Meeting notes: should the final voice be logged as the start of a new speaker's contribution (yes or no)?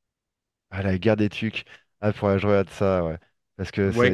yes